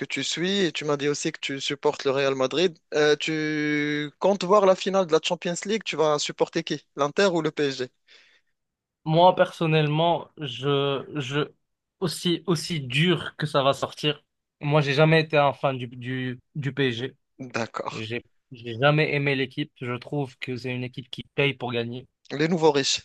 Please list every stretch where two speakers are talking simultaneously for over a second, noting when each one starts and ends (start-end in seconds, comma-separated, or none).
none